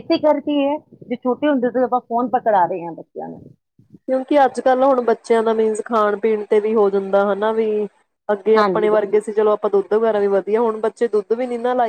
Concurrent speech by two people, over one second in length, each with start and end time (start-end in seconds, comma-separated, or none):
none